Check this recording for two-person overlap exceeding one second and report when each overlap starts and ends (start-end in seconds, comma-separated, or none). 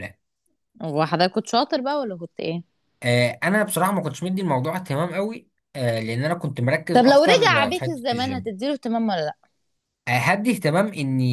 6.9-8.6